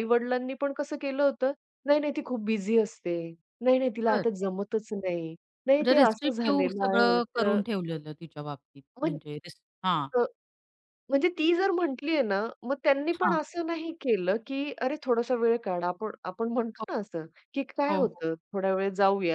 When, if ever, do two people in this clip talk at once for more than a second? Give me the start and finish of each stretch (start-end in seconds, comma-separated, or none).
5.8-7.6